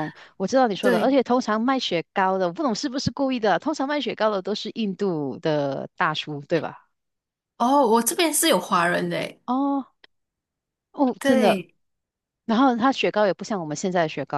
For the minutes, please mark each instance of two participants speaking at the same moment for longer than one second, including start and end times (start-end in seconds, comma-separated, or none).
none